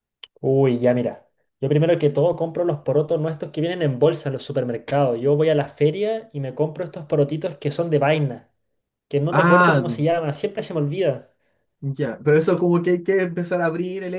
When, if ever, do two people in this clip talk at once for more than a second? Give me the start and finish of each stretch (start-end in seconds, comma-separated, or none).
none